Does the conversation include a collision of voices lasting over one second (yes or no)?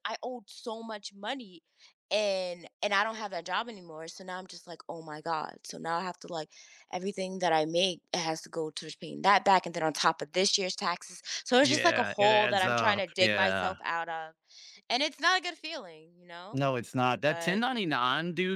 yes